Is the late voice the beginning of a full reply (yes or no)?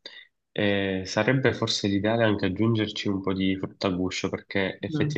no